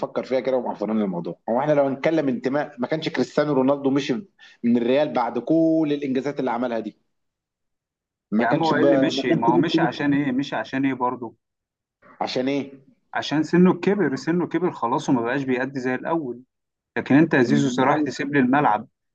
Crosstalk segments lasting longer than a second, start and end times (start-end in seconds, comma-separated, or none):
8.4-9.9